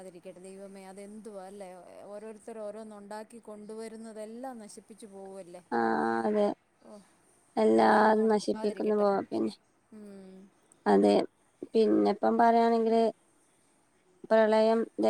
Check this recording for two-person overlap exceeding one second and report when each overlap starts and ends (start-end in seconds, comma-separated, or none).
7.7-9.1